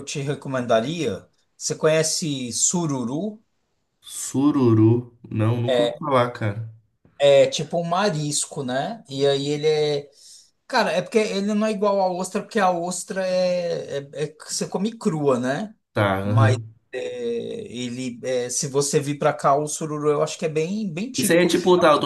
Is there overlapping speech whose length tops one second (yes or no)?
no